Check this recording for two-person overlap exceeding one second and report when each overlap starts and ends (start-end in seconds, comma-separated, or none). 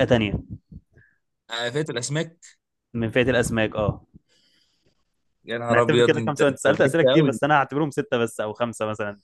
5.7-7.4